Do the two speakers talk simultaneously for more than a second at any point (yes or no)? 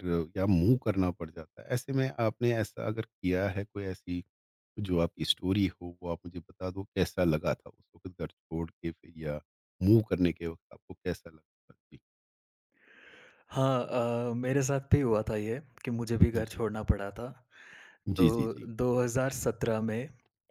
no